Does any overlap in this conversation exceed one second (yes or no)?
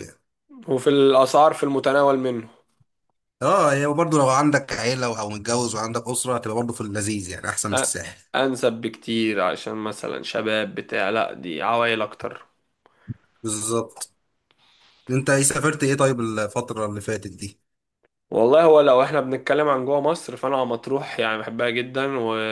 no